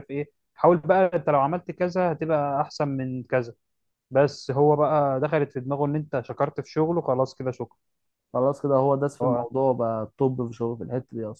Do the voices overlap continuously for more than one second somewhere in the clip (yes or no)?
no